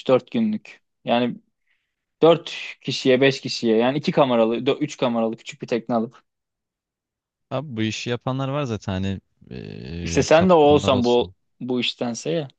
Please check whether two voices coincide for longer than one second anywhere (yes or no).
yes